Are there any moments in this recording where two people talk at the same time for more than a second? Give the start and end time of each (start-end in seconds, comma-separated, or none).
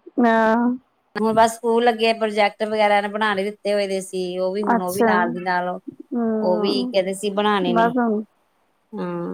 none